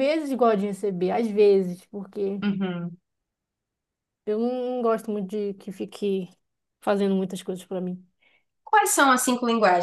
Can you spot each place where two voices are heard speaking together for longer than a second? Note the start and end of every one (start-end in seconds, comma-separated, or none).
none